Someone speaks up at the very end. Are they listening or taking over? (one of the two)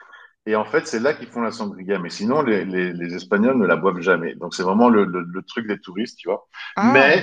listening